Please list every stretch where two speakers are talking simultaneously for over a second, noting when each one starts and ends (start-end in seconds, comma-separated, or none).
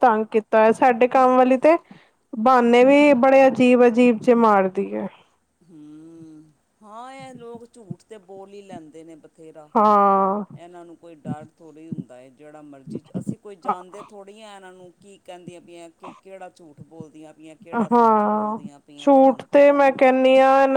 17.9-20.1